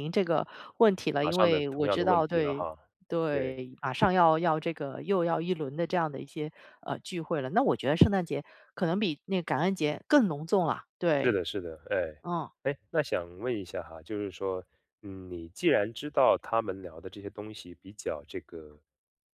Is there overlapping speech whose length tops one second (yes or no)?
yes